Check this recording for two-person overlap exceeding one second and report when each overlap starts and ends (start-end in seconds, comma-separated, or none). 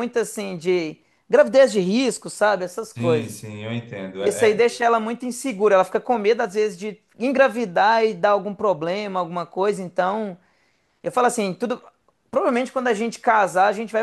none